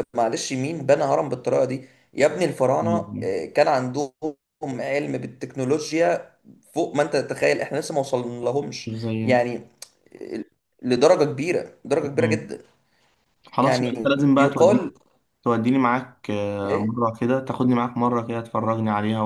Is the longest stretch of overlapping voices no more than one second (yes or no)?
no